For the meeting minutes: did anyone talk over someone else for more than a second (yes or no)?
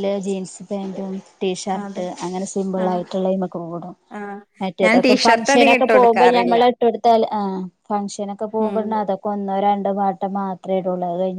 yes